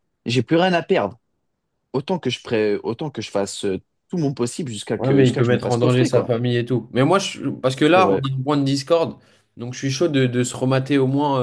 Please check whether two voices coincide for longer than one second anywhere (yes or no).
yes